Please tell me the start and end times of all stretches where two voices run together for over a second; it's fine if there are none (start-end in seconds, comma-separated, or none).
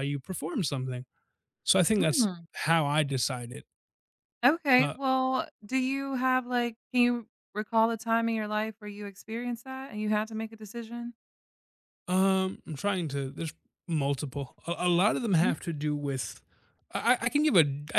none